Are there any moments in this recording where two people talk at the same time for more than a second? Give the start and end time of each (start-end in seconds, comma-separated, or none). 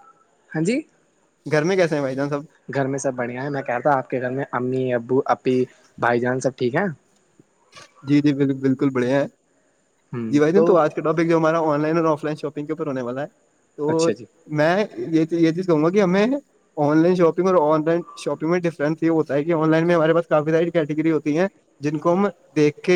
none